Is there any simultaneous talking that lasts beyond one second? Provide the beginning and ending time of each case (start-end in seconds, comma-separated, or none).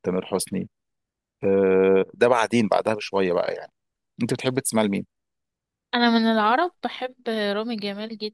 none